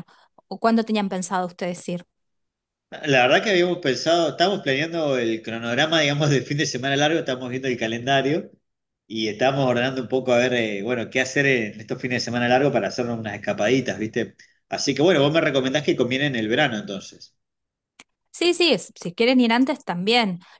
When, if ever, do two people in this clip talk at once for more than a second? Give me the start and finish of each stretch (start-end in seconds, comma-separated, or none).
none